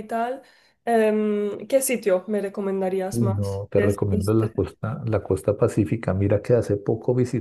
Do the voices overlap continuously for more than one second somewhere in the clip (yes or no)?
yes